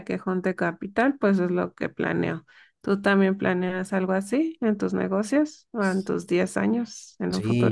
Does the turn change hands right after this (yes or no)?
yes